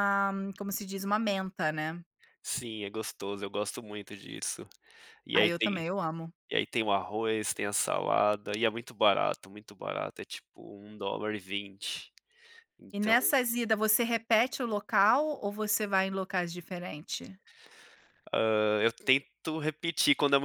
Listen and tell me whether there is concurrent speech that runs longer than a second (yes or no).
no